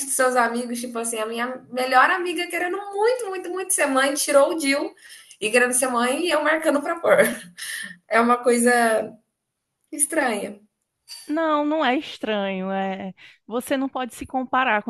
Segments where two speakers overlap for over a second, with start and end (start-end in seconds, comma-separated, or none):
none